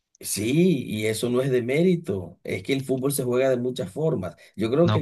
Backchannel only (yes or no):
no